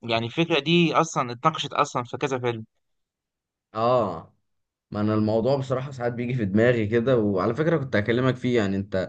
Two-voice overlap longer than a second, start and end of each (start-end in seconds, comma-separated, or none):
none